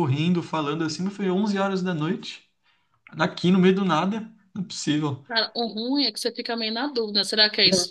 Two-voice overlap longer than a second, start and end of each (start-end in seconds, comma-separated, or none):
none